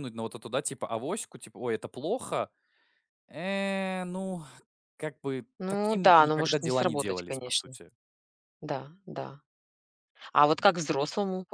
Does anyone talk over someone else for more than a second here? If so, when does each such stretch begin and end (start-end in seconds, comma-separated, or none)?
5.6-7.8